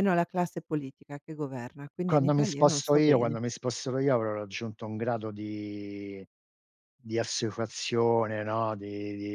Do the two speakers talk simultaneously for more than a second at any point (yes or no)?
yes